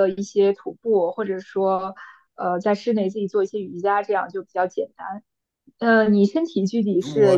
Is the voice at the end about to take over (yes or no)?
yes